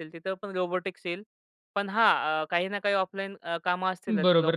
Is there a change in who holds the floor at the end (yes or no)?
yes